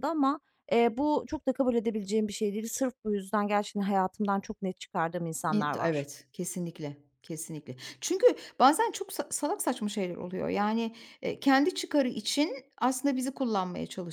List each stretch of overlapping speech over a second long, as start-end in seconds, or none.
none